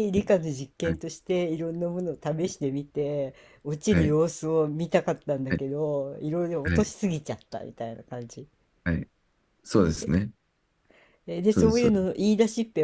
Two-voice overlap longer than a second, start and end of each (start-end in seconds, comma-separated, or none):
none